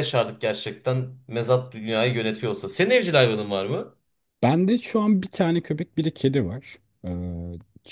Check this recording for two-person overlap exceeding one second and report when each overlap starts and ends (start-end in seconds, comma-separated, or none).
none